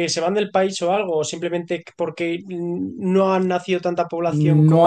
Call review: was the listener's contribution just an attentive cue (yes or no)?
no